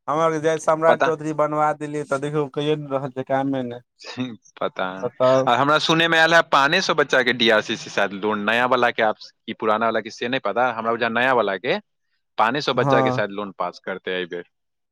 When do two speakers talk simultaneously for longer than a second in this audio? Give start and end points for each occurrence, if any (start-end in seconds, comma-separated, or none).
none